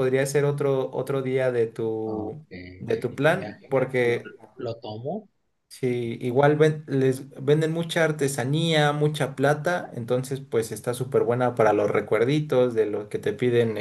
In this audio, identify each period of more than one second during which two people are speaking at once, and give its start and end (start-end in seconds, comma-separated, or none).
2.0-4.3